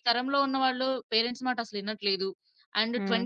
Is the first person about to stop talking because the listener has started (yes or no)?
no